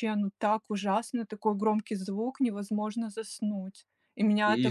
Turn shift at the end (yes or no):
no